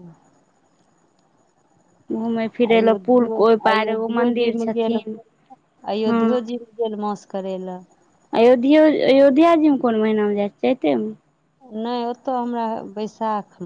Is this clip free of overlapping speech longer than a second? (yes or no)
no